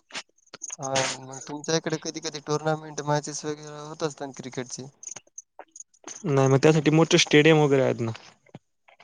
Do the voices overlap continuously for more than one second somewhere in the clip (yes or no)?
no